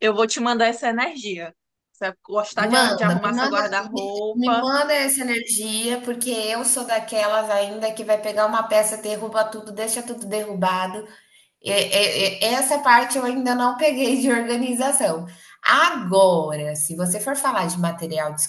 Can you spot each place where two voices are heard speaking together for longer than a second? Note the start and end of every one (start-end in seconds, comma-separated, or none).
2.5-4.7